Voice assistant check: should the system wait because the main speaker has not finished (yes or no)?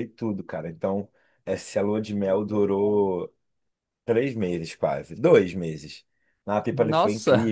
yes